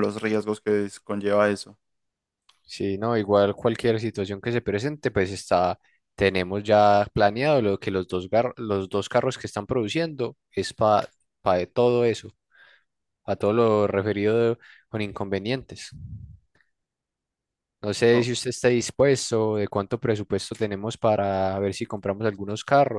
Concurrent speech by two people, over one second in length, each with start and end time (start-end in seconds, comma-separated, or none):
none